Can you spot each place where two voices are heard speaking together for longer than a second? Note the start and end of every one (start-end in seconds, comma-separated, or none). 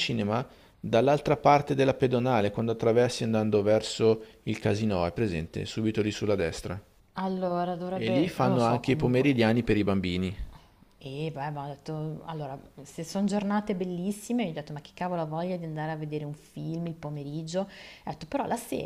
7.9-9.3